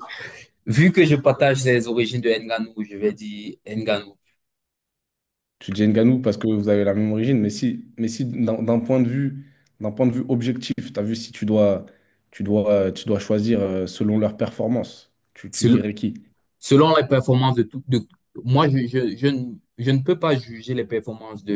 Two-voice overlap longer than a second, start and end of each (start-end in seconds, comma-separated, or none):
none